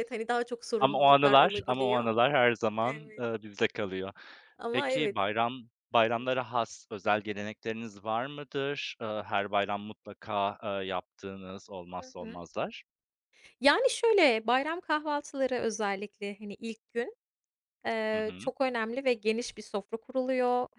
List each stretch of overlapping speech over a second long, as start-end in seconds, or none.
0.8-2.1